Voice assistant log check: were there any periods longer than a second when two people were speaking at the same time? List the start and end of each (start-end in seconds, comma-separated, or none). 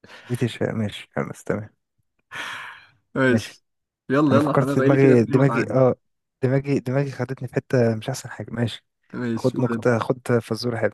4.3-5.8